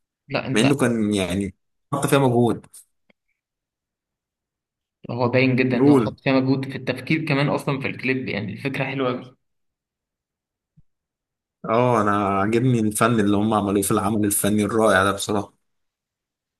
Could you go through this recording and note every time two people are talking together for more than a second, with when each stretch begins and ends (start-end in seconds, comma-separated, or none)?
none